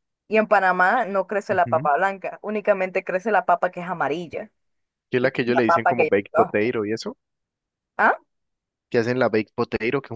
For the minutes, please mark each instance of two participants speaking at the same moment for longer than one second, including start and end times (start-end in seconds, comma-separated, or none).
5.2-6.7